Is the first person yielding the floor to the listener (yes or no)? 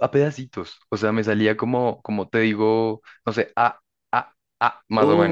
yes